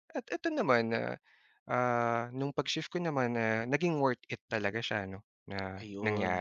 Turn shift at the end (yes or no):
yes